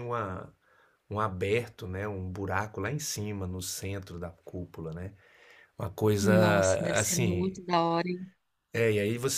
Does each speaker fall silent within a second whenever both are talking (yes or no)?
yes